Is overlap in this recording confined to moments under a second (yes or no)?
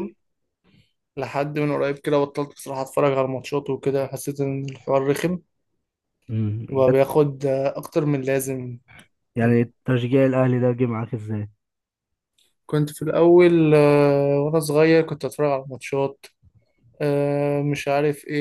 yes